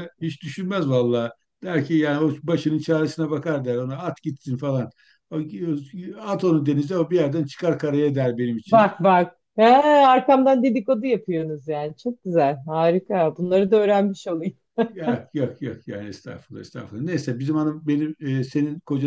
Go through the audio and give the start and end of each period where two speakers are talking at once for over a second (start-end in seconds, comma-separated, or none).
none